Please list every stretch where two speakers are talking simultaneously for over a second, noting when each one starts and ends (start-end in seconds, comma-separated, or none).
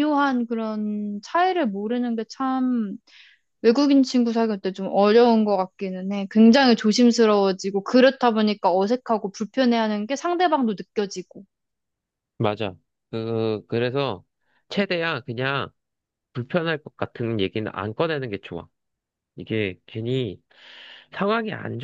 none